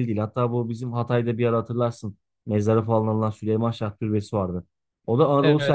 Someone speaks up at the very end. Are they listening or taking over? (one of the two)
listening